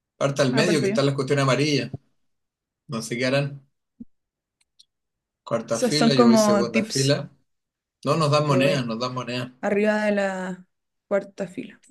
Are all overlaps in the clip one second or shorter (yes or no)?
no